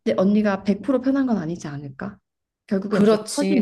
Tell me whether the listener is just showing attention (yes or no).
no